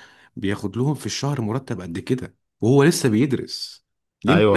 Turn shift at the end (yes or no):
yes